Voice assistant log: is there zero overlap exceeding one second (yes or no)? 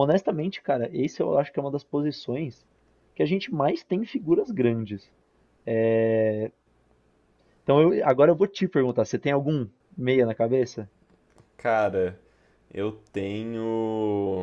yes